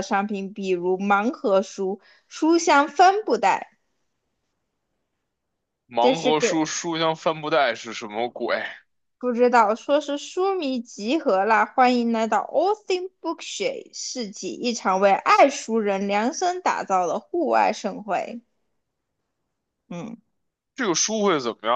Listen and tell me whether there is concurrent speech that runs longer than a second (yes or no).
no